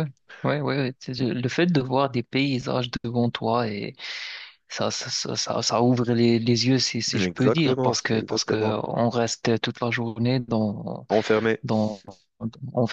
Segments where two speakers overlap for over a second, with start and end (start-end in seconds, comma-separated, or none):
7.1-8.8